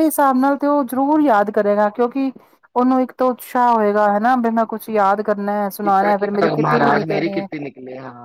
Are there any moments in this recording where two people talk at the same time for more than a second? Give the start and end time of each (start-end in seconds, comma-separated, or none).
5.8-7.5